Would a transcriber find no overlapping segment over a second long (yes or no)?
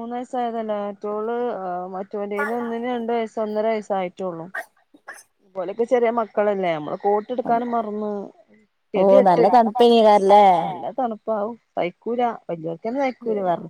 no